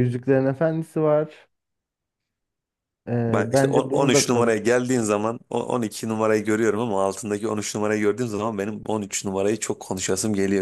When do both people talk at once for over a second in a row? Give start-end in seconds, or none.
3.3-4.6